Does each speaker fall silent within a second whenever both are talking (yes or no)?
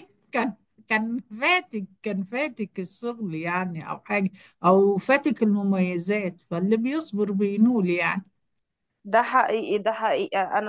yes